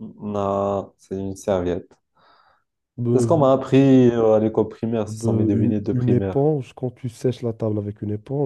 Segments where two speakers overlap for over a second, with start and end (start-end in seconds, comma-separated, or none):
5.0-6.4